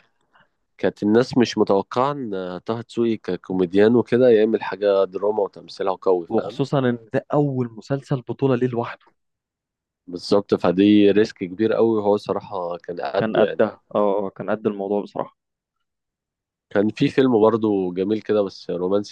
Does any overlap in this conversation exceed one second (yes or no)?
no